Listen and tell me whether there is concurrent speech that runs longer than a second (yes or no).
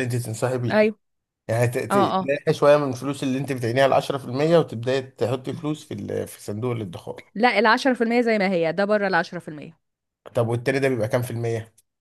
no